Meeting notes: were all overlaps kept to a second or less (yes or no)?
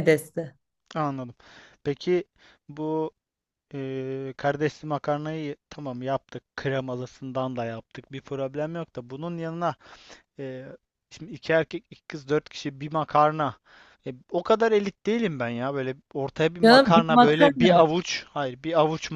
no